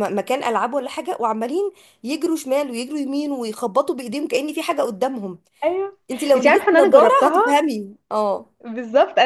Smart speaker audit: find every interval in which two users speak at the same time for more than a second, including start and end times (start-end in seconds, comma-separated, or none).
6.4-7.6